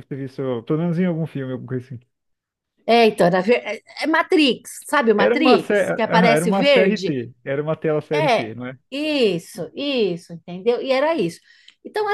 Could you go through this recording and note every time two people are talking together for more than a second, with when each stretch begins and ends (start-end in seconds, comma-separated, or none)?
5.2-7.1